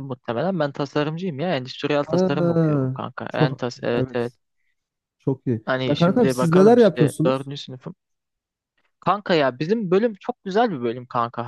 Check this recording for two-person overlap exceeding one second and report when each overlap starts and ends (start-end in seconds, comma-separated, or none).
2.0-3.6, 5.6-7.5